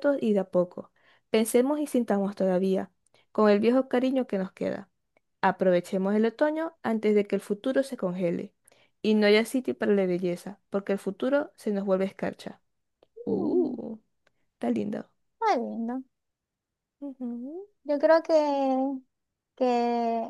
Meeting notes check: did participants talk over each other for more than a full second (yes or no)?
no